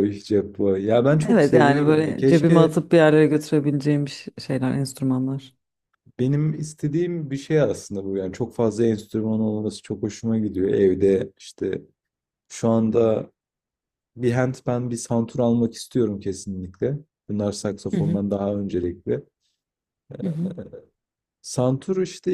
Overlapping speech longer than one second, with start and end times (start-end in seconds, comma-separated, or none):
1.3-2.7